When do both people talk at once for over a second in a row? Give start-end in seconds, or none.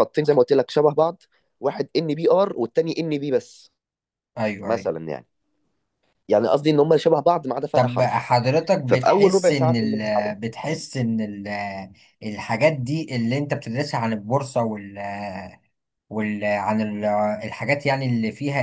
8.9-10.3